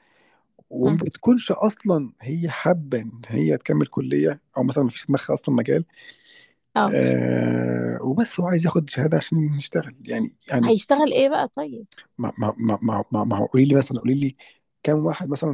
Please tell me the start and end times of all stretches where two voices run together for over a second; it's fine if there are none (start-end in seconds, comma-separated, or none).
none